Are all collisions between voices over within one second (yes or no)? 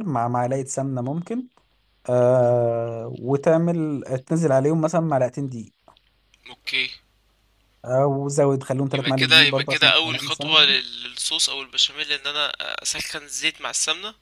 no